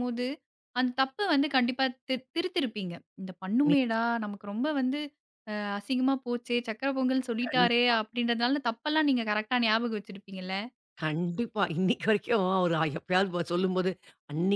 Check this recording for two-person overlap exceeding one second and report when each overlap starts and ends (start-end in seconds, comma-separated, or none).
none